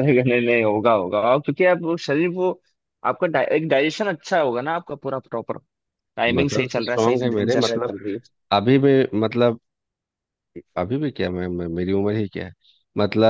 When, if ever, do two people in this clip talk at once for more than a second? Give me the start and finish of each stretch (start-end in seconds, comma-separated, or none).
6.4-7.9